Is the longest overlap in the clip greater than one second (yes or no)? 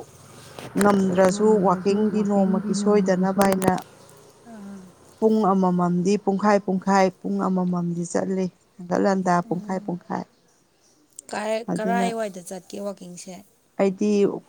yes